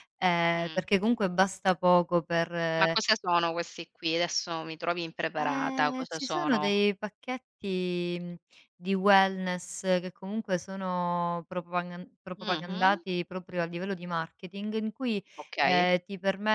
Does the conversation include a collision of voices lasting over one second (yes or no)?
yes